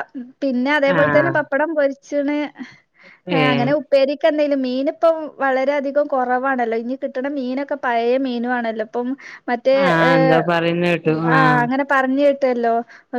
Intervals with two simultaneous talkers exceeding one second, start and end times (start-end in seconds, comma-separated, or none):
none